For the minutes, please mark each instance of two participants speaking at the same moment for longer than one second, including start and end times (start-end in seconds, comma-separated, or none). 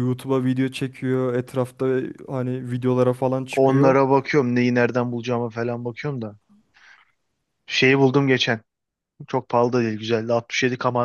none